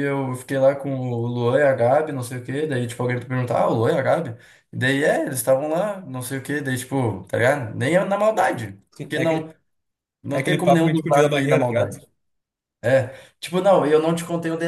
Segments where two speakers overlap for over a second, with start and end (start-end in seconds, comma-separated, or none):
10.3-12.0